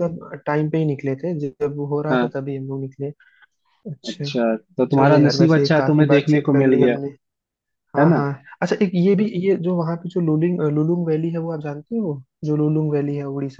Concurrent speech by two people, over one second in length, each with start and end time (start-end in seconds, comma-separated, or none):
4.9-7.0